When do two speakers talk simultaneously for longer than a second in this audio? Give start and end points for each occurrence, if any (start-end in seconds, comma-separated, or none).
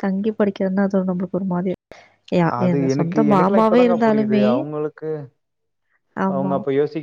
2.6-4.5